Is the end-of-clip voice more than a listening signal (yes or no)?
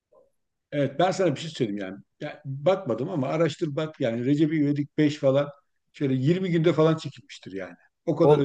yes